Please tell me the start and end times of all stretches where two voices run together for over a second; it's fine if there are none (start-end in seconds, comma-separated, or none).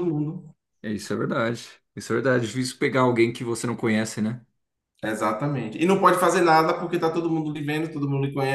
none